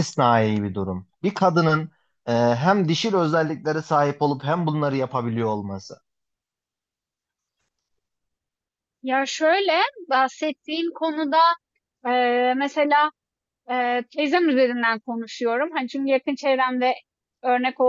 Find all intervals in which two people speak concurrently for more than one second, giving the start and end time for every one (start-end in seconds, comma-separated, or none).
none